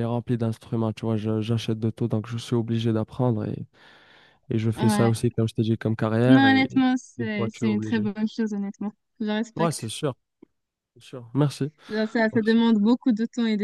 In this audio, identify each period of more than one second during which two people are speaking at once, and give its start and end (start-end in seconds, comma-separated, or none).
6.2-8.1